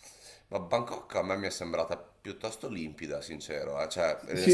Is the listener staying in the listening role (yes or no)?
no